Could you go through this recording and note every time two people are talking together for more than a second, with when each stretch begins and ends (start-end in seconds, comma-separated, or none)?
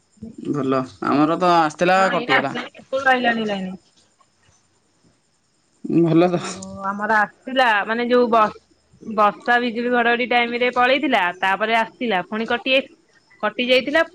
none